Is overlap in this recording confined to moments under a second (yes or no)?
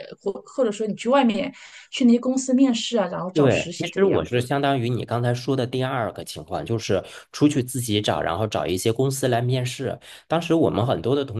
no